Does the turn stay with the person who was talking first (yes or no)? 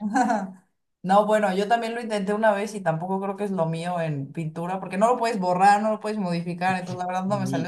yes